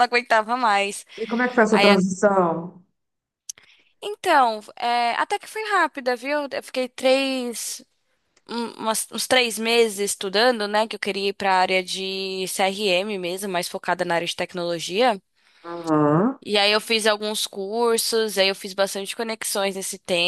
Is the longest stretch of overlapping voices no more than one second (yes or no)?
yes